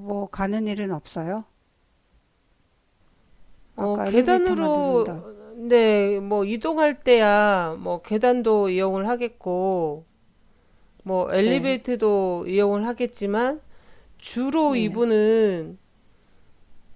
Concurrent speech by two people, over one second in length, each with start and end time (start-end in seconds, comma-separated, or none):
3.8-5.2